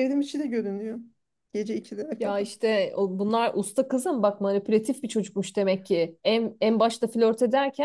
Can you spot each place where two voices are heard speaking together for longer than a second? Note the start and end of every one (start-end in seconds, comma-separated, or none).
none